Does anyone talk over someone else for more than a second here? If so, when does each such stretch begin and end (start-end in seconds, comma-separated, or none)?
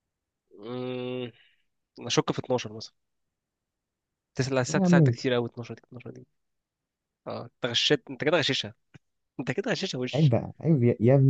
none